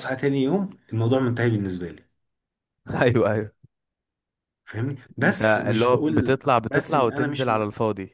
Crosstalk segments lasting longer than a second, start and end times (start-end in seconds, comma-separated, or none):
5.2-7.6